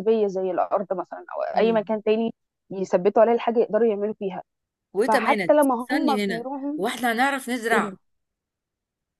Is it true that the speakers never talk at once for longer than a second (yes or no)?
no